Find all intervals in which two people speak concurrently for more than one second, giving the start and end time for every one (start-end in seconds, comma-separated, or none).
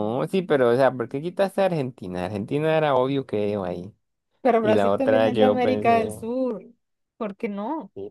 4.6-6.1